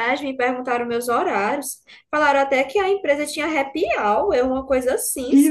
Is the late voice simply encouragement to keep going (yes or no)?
no